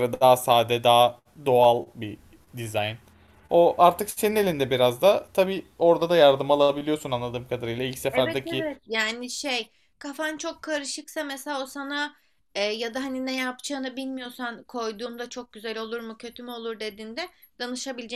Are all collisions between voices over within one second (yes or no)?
yes